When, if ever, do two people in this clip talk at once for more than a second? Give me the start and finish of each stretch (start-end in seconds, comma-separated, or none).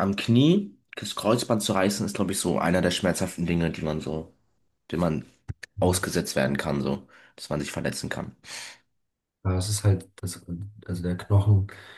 none